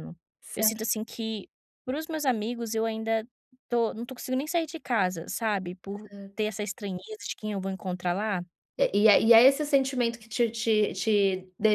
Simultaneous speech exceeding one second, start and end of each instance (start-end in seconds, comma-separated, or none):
none